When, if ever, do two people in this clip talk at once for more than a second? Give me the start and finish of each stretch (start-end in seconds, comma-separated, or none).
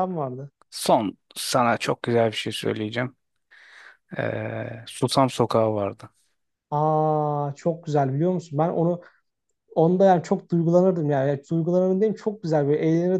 none